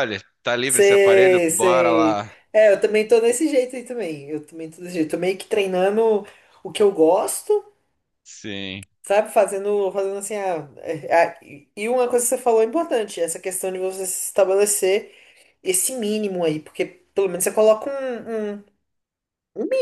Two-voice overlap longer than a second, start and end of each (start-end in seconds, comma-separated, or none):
0.7-2.3